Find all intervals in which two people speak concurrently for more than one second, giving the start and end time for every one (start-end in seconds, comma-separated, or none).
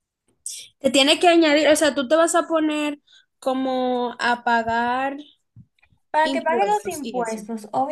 6.2-7.4